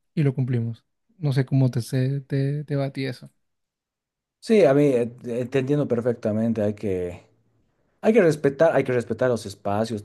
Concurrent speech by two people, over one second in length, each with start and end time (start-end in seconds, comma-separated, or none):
none